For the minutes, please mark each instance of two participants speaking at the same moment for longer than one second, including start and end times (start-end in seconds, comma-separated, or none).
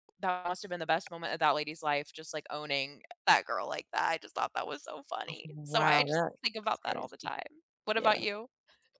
5.5-7.3